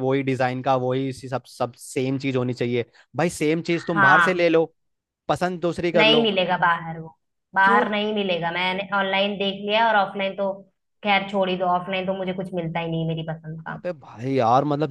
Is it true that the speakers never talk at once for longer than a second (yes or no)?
yes